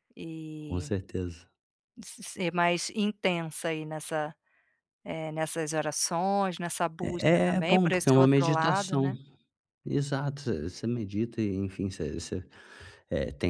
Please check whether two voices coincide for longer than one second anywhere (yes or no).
yes